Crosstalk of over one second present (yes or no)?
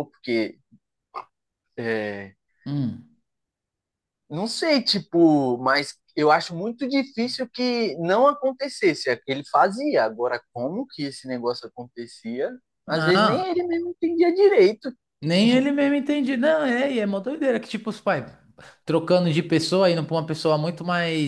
no